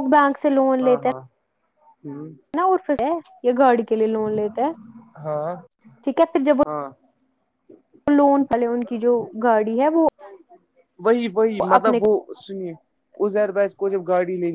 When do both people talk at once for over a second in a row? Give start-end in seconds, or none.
none